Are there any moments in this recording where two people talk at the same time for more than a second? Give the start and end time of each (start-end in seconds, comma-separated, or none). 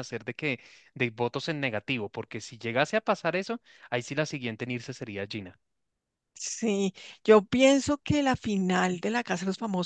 none